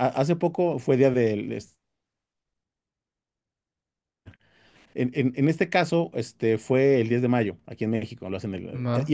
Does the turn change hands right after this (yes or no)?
no